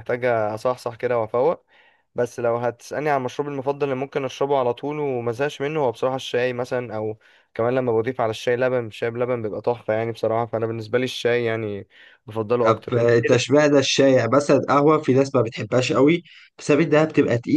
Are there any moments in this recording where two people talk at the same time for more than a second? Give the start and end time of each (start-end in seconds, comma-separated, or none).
12.6-13.8